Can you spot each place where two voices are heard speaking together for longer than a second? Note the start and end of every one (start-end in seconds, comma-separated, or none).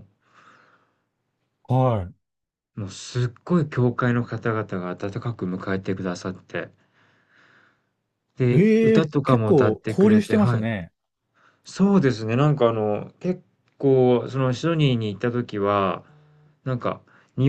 8.5-10.7